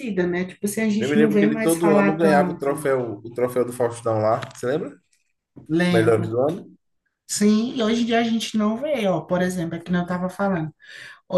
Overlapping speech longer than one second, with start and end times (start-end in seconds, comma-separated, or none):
1.0-2.9